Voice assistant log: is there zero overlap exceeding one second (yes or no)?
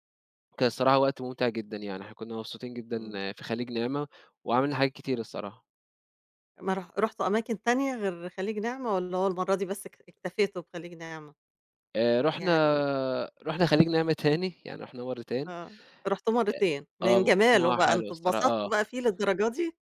no